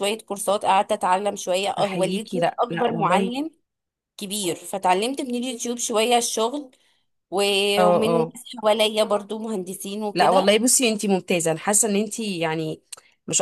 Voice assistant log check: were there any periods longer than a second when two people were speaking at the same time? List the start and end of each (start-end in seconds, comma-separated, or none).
1.8-3.4